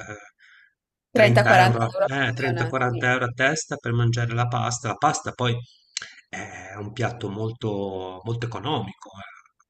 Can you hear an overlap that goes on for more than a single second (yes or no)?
yes